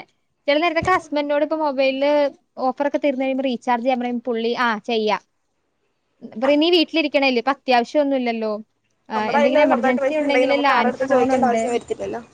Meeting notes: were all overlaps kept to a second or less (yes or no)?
no